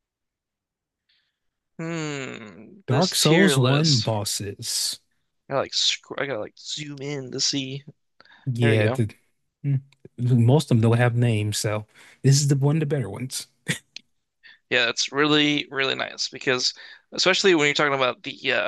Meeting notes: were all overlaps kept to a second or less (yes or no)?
no